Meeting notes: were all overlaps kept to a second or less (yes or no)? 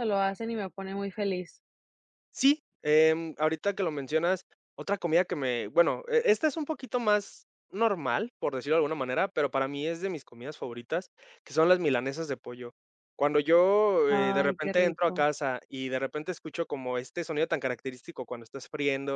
no